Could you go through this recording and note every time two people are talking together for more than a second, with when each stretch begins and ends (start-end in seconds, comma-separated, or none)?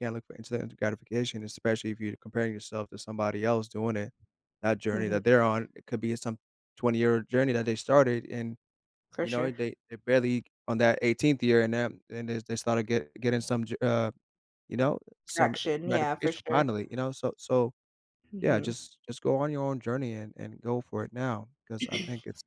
15.3-16.7